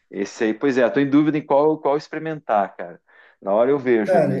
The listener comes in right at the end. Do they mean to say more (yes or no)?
yes